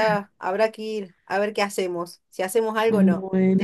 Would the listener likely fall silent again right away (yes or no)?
no